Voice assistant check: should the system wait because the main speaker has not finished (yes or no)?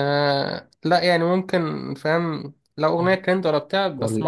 yes